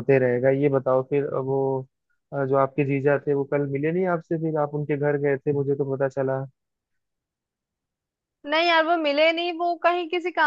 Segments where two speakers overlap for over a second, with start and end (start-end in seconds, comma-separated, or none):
none